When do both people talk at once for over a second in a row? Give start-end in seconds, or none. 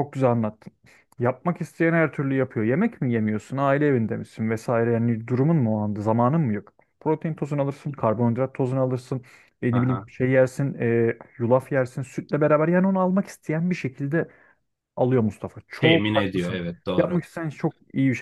15.8-17.2